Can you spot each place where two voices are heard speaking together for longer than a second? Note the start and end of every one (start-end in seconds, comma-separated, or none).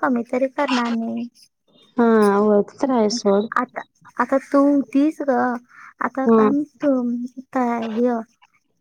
none